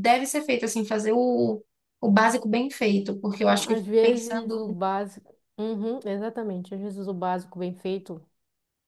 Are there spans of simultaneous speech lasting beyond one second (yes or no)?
yes